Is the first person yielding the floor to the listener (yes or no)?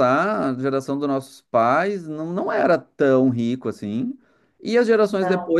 no